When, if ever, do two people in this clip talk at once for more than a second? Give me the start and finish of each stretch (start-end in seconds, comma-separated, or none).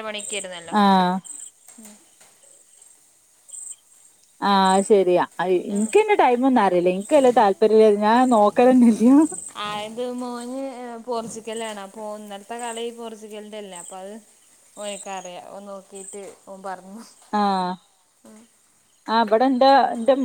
none